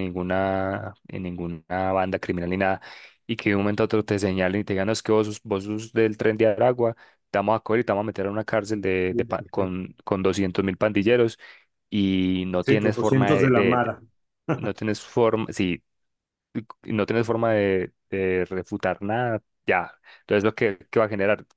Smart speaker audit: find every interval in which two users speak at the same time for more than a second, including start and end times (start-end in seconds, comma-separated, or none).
12.6-13.9